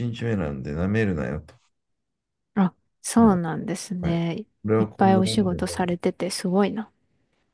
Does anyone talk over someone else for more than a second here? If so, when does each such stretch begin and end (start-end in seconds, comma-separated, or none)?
4.1-5.8